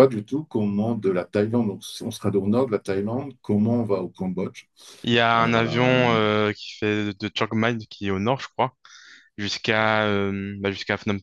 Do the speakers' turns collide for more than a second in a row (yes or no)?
no